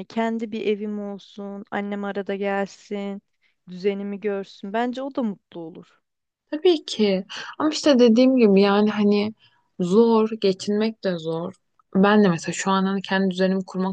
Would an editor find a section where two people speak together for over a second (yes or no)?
no